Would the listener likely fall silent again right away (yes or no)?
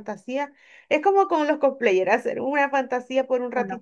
yes